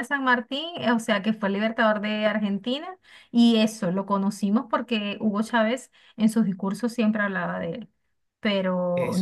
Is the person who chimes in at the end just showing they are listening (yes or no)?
no